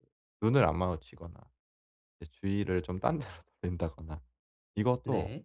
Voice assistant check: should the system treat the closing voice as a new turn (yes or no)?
no